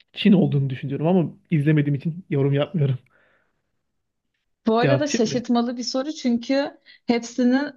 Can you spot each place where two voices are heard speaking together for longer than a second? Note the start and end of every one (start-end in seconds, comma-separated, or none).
none